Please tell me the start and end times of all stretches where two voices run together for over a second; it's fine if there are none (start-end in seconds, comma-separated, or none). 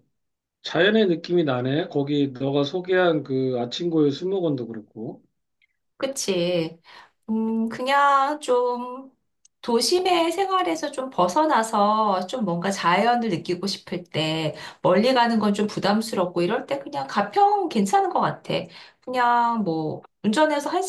none